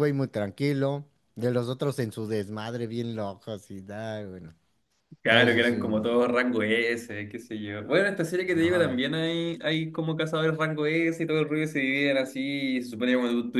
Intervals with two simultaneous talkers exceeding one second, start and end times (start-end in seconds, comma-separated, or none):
none